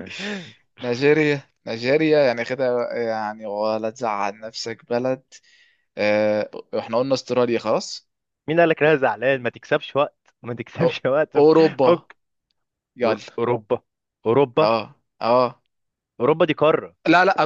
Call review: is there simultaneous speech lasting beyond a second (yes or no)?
no